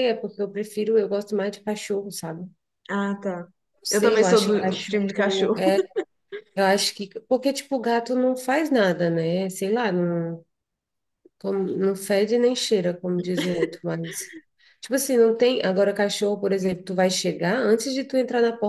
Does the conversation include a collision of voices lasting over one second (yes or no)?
yes